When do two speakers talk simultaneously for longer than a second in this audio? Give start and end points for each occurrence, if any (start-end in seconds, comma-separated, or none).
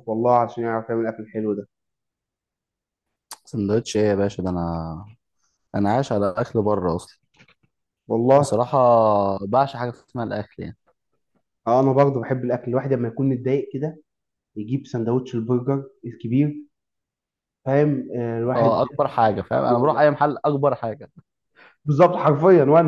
none